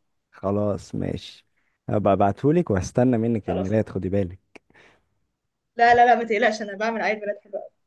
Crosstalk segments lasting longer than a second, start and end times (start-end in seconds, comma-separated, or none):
none